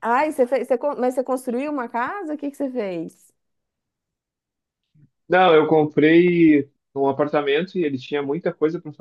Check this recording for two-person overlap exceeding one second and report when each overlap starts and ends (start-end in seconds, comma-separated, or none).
none